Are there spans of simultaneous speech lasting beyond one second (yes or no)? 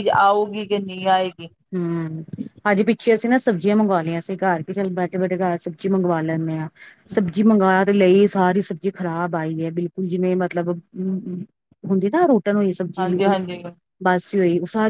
no